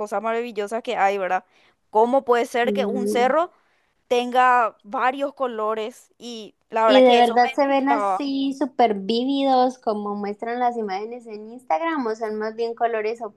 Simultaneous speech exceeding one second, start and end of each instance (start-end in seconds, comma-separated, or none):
6.8-8.2